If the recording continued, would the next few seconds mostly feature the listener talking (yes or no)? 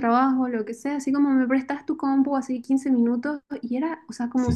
no